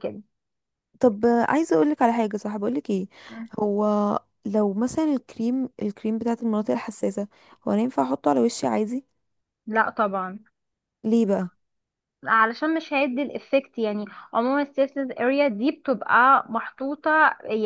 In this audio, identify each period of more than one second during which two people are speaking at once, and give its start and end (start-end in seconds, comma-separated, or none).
none